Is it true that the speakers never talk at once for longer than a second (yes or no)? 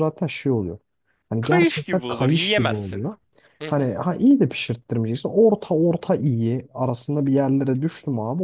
no